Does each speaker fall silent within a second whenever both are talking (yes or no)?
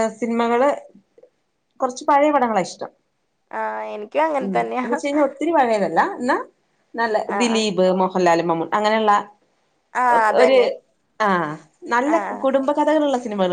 yes